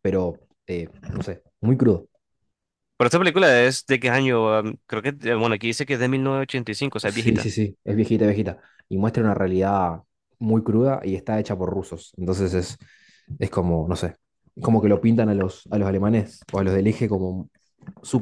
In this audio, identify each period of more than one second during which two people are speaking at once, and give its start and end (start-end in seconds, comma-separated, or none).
none